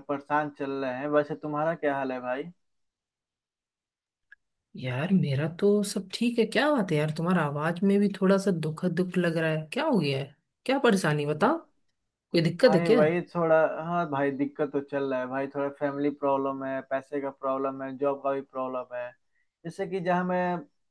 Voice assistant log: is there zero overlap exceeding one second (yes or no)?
yes